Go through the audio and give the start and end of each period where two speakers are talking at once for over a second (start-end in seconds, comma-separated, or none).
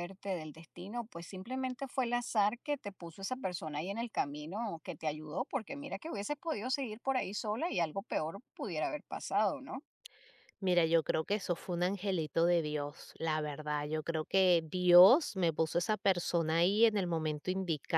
none